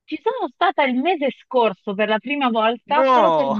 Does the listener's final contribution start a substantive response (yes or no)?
no